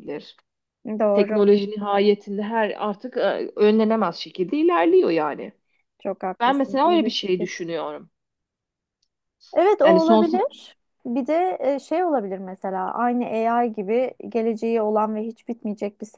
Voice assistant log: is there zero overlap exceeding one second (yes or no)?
no